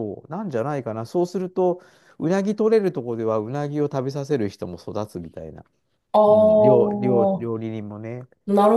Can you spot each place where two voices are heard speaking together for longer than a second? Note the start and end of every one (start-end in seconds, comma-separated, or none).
6.3-7.5